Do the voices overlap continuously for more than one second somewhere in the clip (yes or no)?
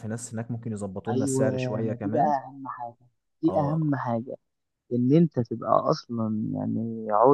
yes